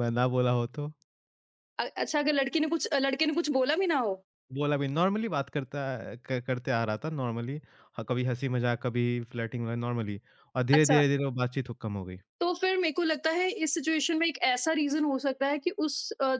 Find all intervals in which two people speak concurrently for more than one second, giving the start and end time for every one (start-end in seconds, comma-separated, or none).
none